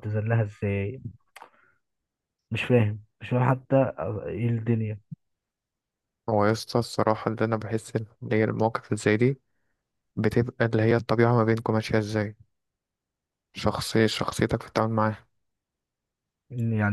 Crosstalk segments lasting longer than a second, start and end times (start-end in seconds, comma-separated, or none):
none